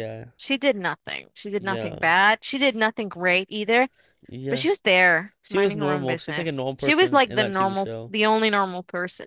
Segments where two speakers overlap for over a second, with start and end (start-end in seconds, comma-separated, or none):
5.4-8.1